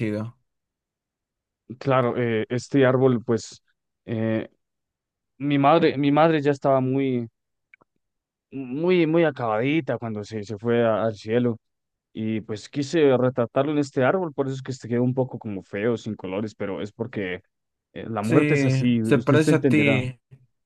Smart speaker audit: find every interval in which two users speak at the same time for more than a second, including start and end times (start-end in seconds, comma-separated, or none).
18.2-20.0